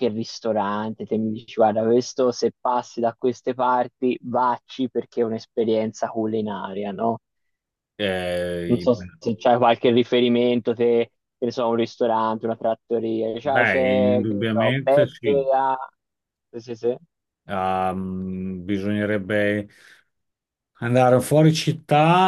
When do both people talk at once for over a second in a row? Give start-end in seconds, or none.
13.4-15.4